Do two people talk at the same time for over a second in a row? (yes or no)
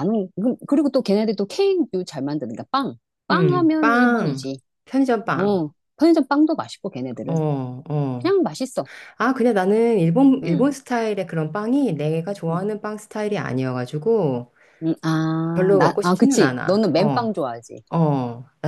yes